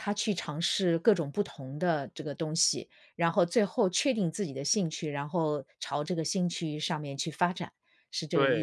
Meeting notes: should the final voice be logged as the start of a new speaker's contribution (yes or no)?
yes